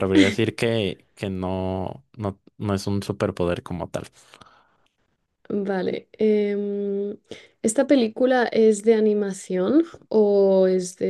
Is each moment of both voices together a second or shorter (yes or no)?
yes